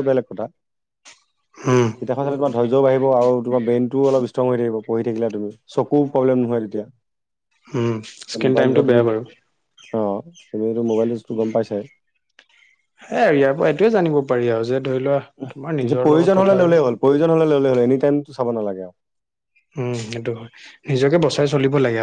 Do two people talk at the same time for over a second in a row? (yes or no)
yes